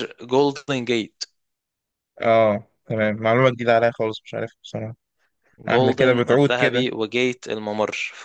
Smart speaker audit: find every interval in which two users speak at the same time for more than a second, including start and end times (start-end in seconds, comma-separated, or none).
5.7-6.9